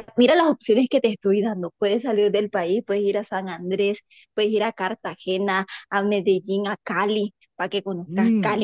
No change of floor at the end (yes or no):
yes